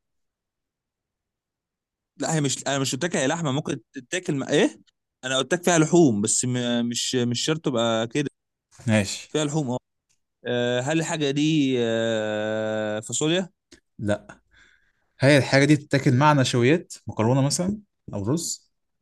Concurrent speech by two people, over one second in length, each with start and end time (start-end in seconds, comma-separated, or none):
none